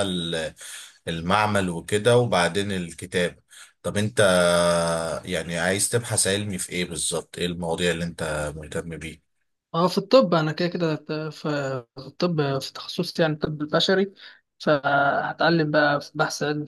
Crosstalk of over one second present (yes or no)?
no